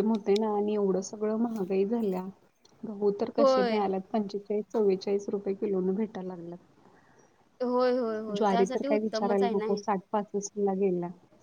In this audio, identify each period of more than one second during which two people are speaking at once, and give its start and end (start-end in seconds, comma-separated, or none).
8.4-9.8